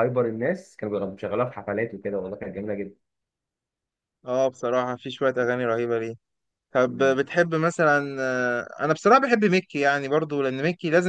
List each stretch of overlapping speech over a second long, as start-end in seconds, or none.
none